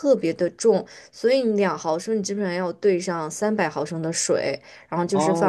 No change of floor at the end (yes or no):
no